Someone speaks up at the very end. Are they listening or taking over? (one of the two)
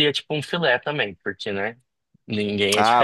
taking over